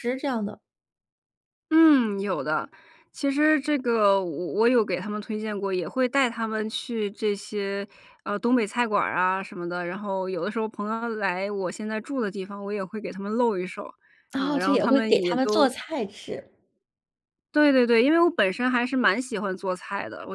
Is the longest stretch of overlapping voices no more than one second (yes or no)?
no